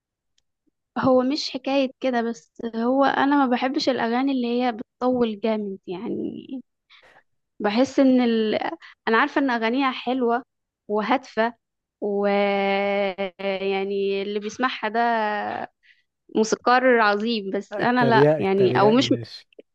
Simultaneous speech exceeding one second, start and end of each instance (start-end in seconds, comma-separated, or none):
17.7-19.1